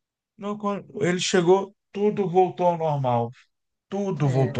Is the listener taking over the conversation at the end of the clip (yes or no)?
no